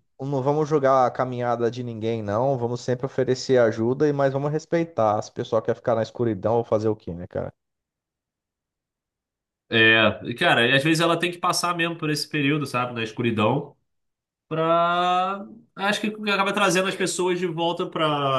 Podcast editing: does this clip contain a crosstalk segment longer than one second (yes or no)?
no